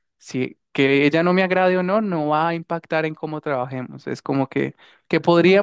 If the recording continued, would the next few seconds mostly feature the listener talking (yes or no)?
no